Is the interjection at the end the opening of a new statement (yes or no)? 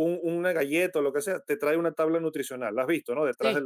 yes